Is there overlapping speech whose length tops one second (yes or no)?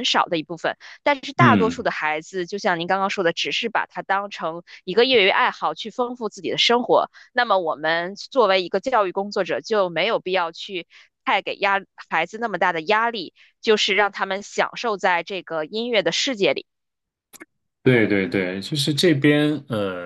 no